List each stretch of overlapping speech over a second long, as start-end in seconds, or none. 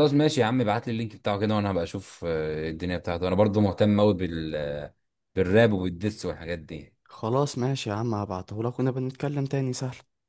none